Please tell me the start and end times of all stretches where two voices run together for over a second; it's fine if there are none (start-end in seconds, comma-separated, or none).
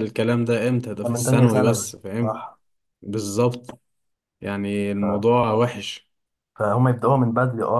1.0-2.4